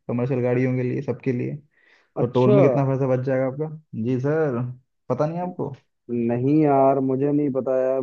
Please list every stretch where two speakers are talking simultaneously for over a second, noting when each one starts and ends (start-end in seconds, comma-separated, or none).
none